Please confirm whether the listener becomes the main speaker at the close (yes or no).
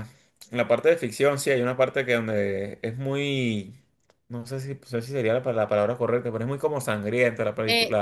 yes